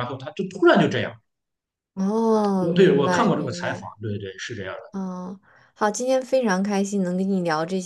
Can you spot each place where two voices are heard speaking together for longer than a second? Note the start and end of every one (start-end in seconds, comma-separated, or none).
2.6-3.9